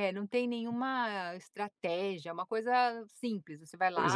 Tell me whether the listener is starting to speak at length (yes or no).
yes